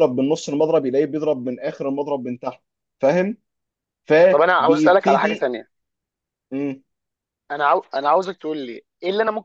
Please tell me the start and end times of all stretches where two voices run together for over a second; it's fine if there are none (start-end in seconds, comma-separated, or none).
4.3-5.5